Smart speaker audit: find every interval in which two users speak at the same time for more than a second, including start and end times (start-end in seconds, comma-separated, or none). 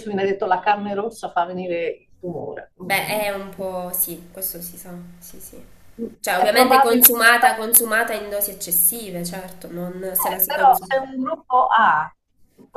6.2-7.7